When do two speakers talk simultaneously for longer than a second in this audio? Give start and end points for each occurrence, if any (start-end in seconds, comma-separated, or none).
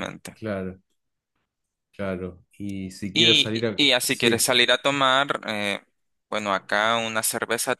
3.1-4.5